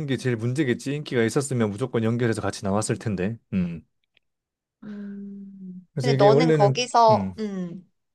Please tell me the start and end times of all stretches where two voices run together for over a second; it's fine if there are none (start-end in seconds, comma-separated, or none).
5.9-7.4